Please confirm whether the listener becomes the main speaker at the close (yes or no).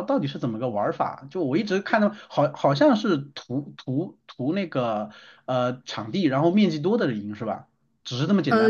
yes